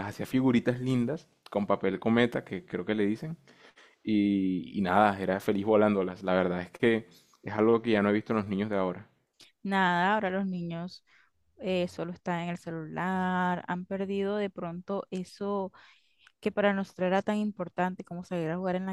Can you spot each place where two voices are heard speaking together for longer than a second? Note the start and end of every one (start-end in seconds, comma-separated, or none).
none